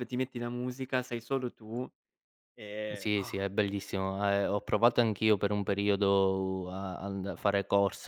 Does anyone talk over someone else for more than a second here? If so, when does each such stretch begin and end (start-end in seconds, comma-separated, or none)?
none